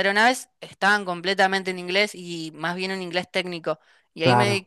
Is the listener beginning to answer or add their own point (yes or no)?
no